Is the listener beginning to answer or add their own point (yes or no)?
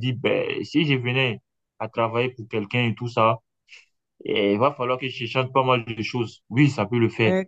yes